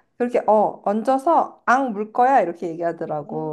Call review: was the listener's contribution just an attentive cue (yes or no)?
no